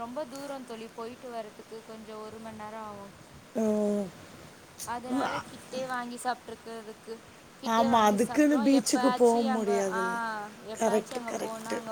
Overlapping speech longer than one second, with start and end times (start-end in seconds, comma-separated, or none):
7.8-10.0